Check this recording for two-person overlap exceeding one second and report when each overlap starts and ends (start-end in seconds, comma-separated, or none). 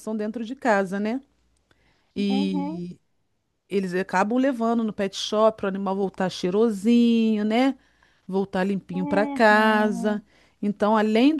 8.9-10.2